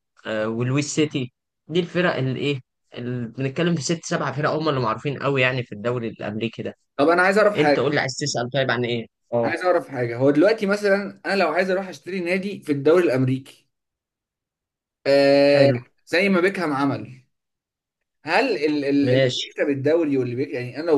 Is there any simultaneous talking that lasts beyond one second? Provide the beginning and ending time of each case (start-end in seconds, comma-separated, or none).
none